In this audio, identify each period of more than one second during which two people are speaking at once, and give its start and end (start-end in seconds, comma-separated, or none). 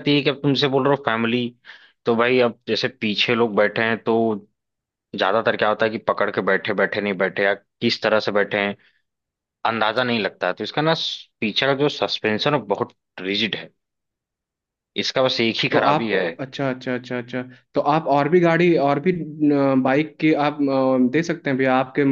none